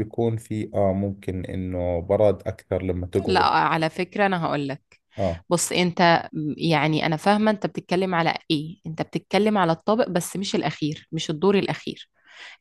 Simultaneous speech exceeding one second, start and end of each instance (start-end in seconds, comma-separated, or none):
none